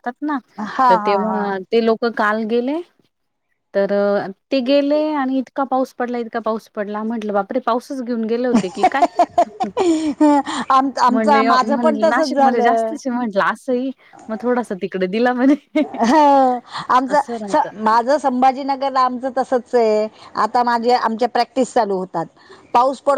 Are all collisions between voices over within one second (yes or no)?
no